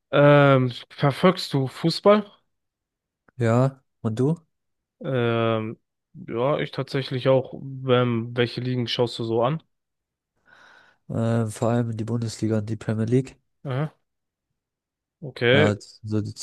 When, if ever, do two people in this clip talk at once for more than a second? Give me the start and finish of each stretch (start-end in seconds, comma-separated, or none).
none